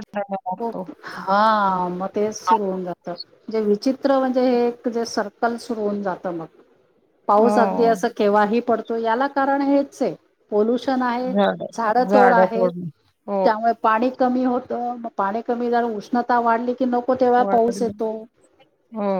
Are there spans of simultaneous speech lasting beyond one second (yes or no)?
no